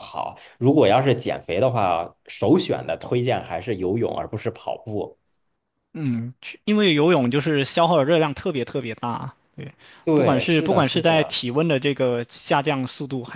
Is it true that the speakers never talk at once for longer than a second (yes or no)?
no